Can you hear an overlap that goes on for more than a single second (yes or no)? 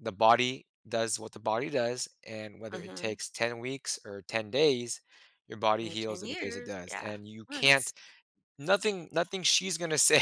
yes